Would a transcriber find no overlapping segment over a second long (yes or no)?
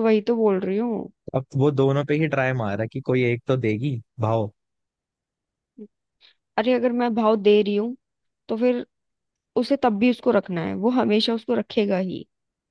yes